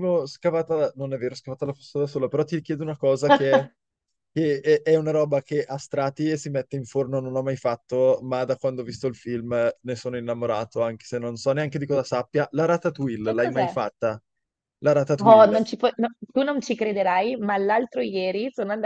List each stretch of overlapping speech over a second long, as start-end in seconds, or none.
none